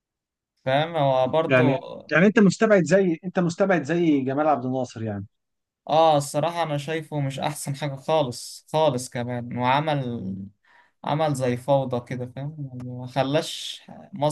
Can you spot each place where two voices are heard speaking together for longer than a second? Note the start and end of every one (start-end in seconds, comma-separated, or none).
none